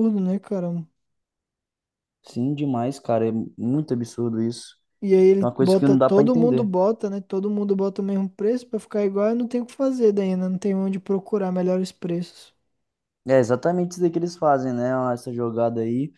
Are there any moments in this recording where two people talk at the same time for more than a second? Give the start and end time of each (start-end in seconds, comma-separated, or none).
5.4-6.7